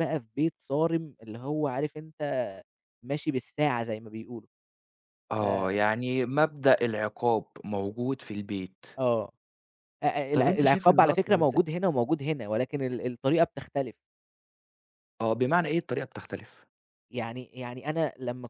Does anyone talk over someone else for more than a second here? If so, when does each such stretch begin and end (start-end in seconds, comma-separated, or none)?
10.3-11.6